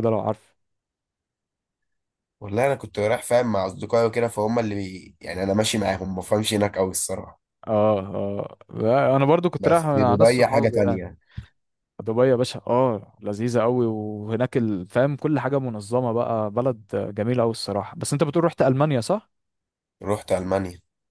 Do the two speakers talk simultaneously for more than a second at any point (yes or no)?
yes